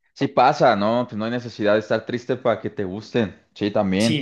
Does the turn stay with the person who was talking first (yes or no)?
yes